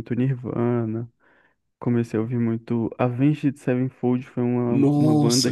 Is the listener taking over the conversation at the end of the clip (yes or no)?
yes